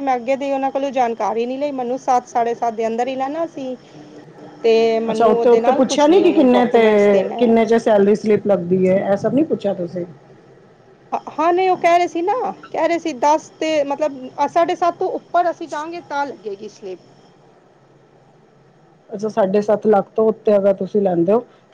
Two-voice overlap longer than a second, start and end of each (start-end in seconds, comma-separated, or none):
5.1-6.8